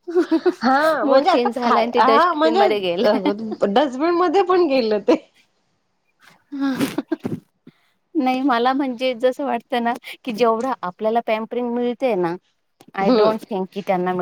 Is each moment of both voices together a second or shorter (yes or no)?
no